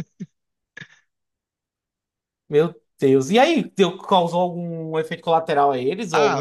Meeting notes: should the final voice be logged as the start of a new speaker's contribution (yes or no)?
yes